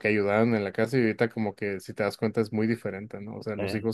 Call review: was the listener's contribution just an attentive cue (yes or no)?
yes